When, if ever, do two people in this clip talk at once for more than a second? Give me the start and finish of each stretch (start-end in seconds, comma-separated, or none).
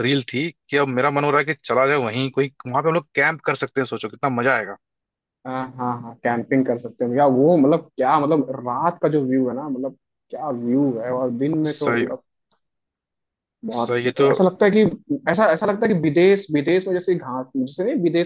none